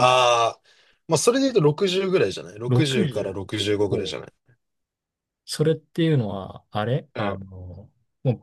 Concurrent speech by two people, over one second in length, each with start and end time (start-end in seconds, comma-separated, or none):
2.7-3.9